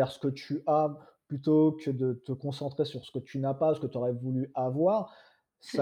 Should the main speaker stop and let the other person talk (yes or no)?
no